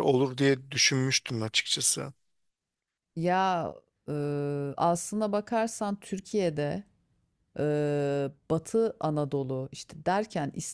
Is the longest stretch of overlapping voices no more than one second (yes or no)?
yes